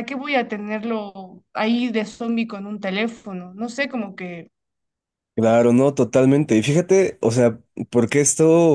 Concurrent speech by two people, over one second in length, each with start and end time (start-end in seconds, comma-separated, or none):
none